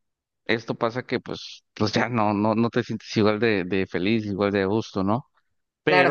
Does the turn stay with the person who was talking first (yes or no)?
no